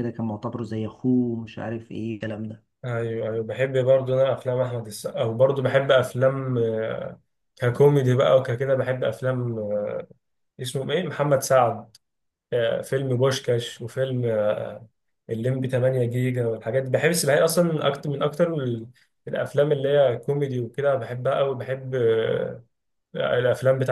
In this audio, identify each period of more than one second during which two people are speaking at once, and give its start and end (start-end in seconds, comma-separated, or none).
none